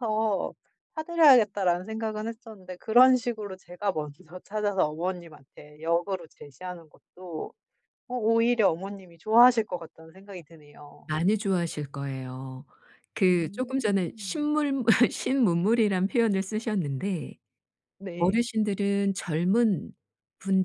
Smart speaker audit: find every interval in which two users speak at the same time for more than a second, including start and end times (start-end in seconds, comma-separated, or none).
13.2-14.5